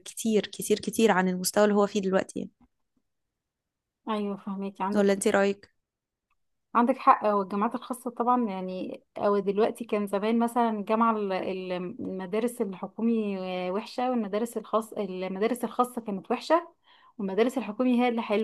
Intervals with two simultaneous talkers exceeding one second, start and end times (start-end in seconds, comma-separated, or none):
none